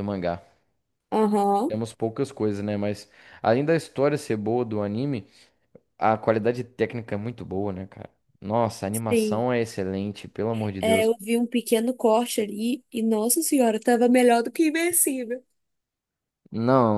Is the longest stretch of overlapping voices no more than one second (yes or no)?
yes